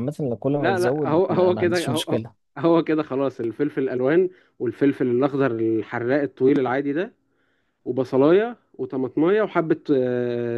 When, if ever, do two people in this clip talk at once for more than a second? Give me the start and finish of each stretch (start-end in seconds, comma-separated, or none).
0.6-2.2